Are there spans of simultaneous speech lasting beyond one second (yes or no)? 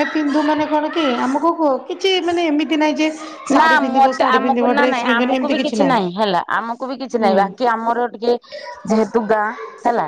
yes